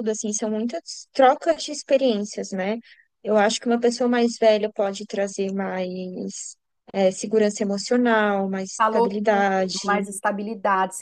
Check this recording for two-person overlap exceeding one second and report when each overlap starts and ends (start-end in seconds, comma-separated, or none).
8.8-10.1